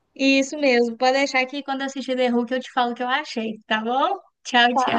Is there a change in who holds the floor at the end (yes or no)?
yes